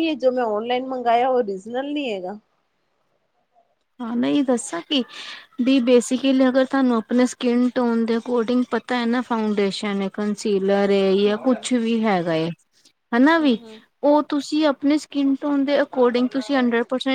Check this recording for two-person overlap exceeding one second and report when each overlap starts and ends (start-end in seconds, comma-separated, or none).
none